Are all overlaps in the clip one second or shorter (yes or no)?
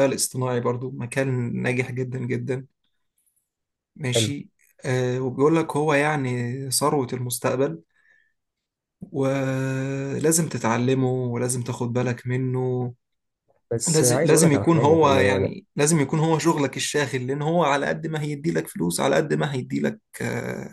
no